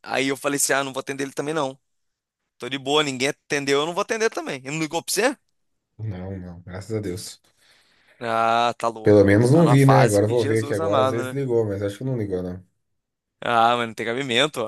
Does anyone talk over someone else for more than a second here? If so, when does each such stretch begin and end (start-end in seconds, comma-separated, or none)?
9.0-11.4